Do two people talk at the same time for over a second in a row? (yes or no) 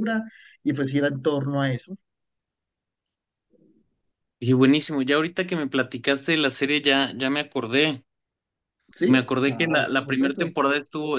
yes